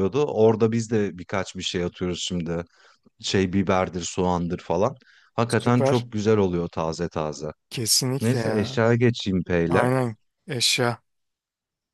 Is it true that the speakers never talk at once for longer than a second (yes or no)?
yes